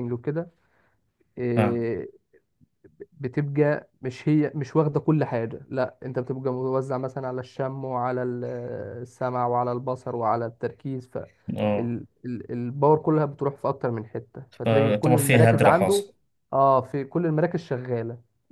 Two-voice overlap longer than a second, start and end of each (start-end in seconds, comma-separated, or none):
14.6-16.0